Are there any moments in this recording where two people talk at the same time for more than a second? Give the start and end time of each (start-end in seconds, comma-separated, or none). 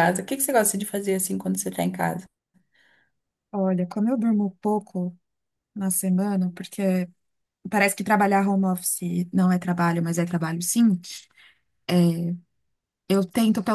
none